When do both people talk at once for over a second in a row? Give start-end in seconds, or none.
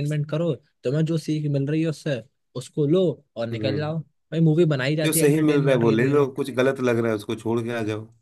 5.0-6.3